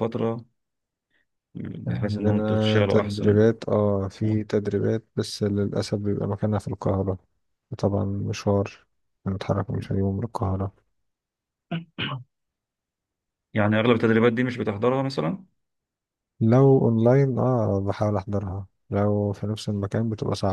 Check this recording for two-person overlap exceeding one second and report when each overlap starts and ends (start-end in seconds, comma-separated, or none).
1.9-3.4